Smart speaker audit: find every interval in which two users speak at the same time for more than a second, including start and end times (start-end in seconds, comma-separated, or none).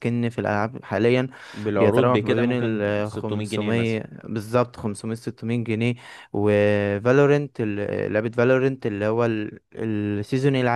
1.8-4.0